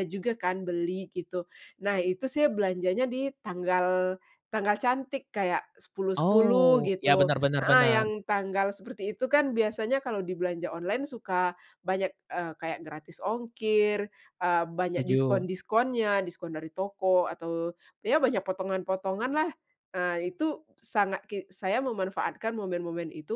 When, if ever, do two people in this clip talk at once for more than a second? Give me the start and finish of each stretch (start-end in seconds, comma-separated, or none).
6.2-8.0